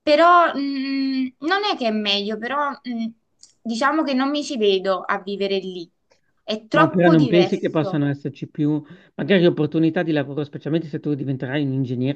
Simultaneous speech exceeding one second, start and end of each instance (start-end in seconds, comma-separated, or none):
6.7-8.0